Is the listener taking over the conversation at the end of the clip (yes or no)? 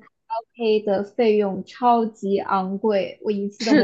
yes